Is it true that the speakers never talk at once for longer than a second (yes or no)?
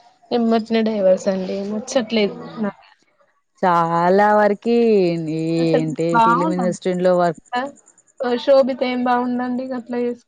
no